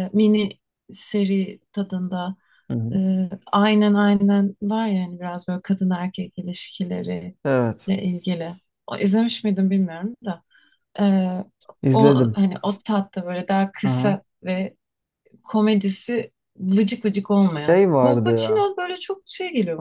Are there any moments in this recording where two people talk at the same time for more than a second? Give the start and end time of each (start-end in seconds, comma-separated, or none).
17.4-18.7